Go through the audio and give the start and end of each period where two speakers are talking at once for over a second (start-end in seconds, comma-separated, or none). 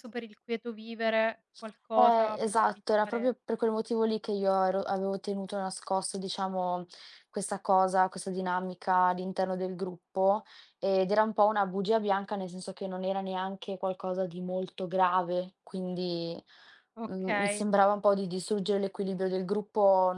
1.9-3.3